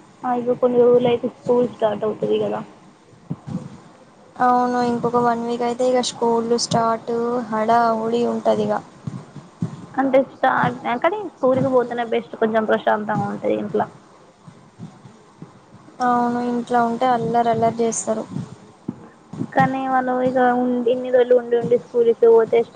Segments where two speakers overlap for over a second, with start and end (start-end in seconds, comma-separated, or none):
none